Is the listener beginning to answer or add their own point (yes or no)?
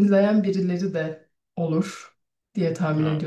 no